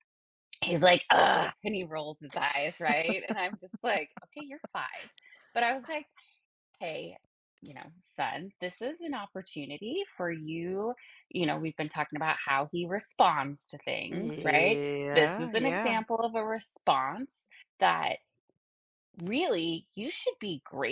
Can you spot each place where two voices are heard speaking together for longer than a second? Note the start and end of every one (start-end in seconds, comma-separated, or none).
14.1-16.0